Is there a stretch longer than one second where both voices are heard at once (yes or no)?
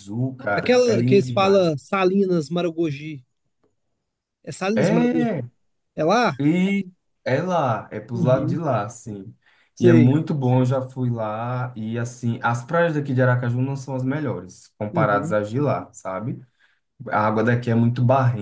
yes